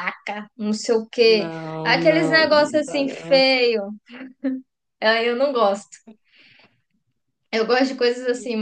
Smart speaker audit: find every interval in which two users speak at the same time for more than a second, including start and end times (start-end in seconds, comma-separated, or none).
1.2-3.5